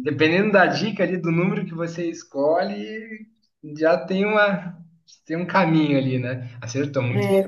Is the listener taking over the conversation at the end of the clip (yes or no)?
yes